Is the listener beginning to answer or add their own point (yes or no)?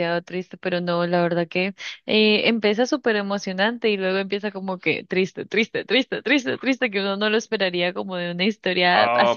yes